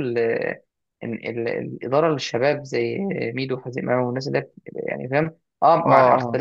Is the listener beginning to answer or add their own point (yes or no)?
no